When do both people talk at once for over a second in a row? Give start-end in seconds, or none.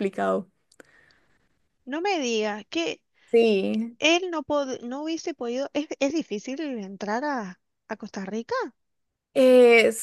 none